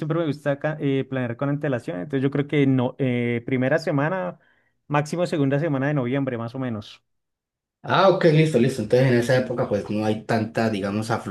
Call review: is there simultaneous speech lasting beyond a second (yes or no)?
no